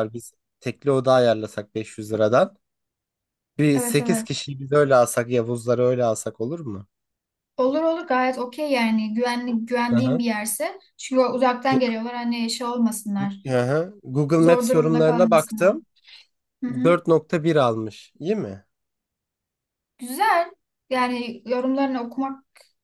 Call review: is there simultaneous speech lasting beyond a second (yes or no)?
yes